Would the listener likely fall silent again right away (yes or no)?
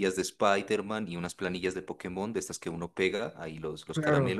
yes